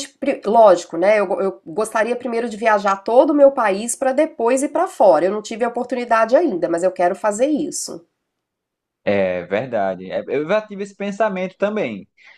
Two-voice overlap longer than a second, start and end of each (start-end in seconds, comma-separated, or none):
none